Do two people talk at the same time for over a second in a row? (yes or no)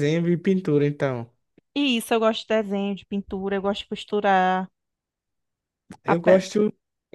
no